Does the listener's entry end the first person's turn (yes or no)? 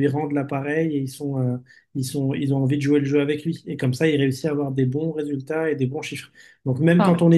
no